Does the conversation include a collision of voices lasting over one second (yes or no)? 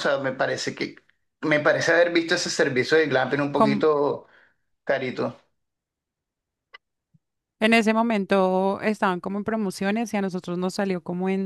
no